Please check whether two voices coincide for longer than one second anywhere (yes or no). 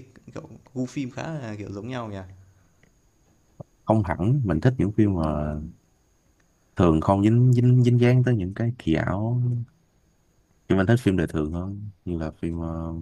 no